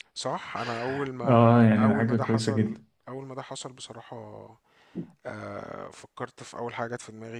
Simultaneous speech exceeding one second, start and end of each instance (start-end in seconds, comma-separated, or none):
1.3-2.8